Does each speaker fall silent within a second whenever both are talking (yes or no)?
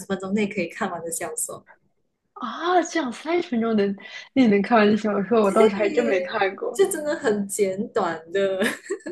no